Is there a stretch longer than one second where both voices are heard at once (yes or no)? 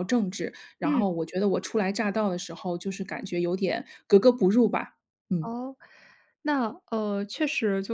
no